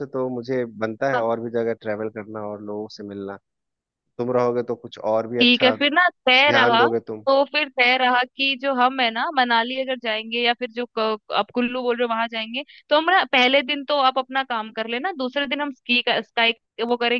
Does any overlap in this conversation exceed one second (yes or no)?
no